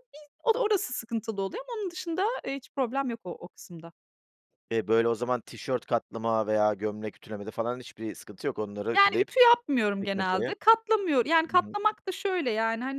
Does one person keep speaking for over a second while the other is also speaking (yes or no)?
no